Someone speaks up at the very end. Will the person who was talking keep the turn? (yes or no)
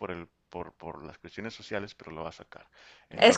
no